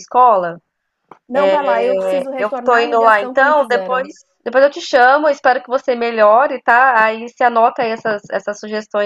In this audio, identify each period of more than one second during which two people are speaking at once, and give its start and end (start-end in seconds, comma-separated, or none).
2.4-4.1